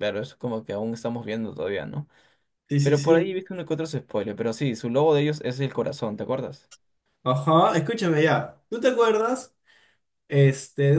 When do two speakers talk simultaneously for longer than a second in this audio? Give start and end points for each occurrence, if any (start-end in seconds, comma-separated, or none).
none